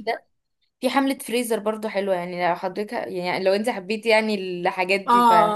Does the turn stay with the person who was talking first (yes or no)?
no